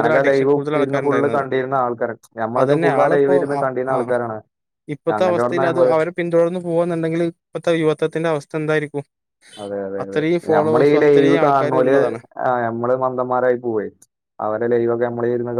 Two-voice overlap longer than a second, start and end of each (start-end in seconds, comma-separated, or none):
10.0-11.9